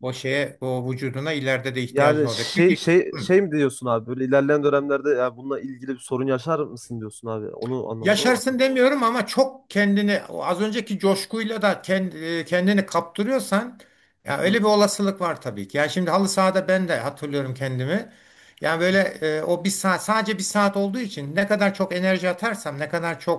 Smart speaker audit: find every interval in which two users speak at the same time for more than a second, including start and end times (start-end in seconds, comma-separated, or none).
1.9-3.3